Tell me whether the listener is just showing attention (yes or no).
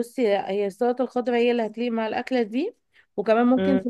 yes